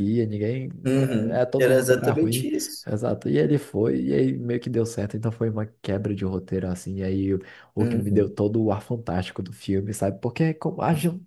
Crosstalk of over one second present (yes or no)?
yes